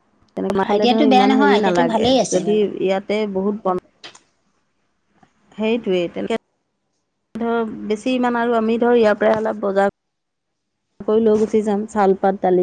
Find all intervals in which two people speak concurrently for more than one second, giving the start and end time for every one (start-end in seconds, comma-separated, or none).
0.7-2.6